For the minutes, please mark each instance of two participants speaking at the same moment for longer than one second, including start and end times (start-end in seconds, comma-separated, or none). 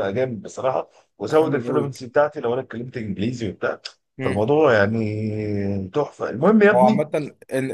none